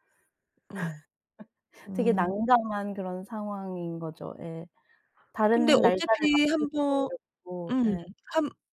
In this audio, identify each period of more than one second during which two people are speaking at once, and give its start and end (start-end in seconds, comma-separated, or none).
5.5-7.1